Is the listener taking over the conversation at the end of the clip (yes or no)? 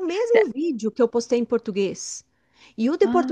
no